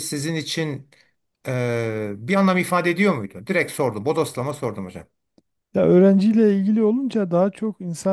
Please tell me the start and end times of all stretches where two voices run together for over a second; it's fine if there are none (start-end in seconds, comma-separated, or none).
none